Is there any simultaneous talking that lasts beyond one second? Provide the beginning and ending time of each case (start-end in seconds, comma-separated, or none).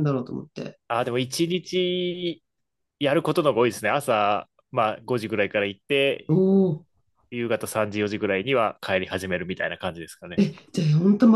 none